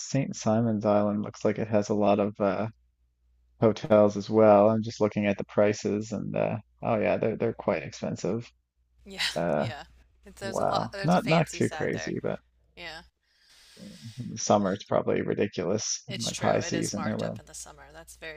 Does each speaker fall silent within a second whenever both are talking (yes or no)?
no